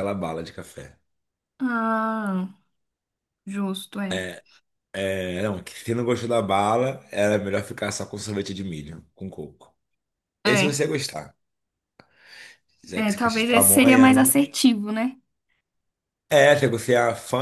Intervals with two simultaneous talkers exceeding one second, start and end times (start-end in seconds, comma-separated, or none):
12.9-14.4